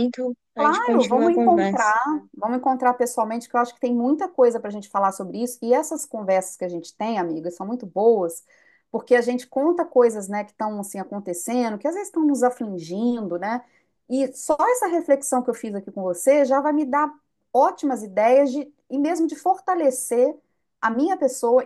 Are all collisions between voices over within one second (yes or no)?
no